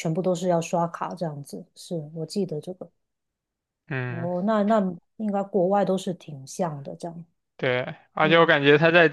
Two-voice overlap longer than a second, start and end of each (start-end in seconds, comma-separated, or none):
none